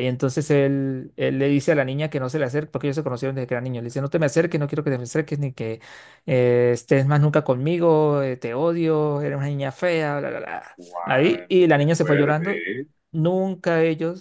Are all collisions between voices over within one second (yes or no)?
no